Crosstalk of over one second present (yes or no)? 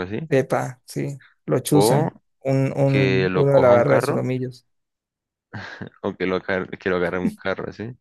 yes